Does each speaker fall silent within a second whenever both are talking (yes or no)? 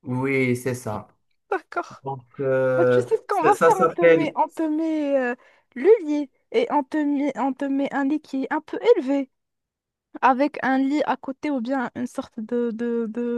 no